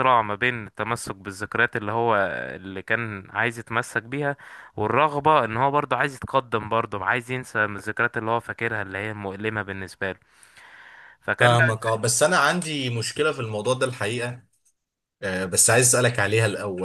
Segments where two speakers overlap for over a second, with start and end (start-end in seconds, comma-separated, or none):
none